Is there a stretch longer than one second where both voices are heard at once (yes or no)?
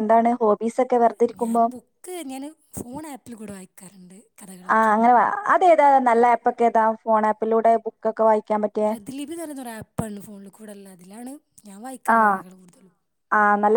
no